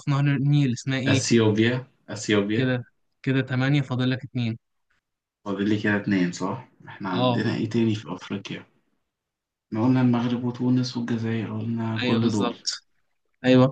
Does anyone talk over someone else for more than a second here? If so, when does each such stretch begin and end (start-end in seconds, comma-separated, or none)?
none